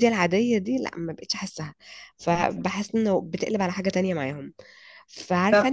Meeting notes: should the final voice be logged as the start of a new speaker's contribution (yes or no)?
no